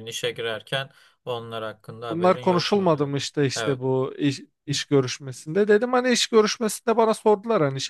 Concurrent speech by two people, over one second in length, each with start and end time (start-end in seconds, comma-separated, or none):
2.1-3.8